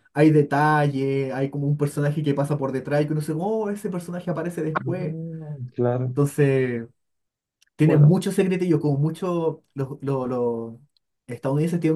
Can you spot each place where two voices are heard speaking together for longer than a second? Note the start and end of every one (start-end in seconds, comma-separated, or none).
none